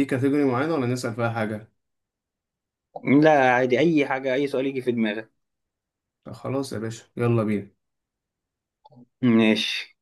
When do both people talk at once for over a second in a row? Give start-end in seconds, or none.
none